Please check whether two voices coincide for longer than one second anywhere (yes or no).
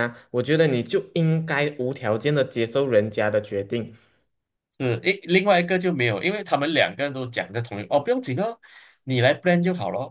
no